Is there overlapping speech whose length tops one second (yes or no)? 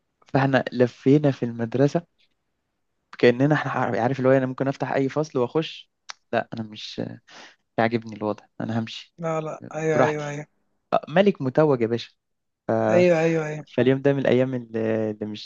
no